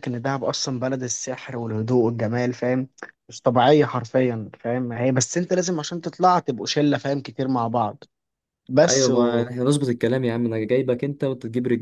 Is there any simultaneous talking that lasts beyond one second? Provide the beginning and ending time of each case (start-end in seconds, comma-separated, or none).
none